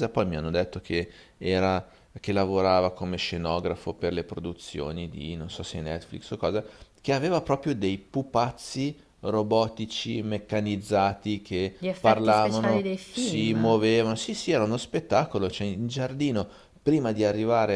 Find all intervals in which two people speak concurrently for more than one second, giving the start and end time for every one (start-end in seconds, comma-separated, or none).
11.8-13.8